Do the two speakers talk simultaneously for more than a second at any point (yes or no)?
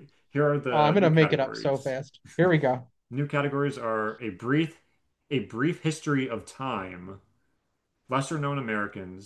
yes